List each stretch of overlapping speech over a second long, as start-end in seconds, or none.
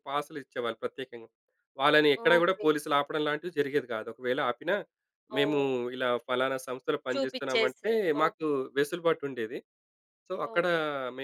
7.1-8.5